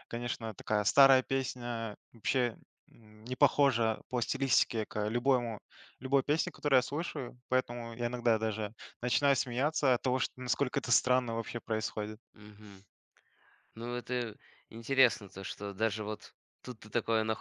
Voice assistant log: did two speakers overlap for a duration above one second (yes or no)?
no